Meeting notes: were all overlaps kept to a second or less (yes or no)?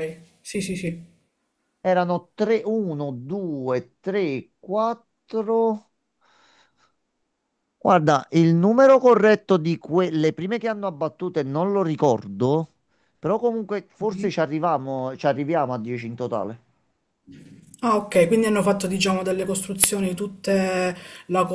yes